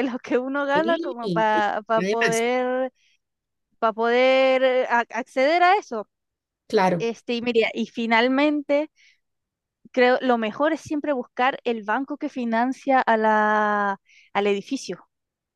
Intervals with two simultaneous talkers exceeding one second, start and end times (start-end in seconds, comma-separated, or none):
0.7-2.4